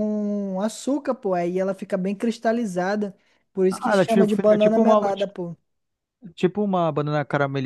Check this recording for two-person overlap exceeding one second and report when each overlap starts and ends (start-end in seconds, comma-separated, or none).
3.7-5.0